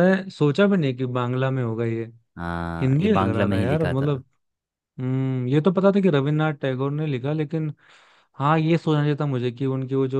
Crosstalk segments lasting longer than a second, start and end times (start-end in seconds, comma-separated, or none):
2.8-4.1